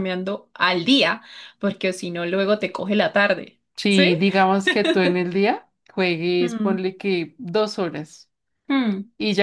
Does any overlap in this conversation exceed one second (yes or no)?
no